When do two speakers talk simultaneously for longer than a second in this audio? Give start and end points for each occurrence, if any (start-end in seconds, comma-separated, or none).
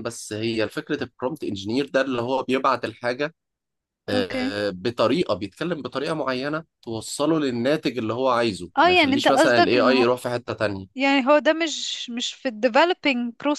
8.8-10.1